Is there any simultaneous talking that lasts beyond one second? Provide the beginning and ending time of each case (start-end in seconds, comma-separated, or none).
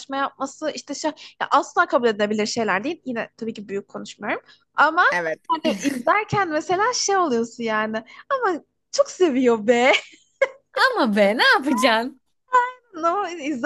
none